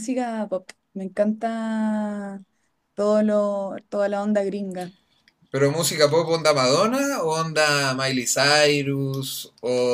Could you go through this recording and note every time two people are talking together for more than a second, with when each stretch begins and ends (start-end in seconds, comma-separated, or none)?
none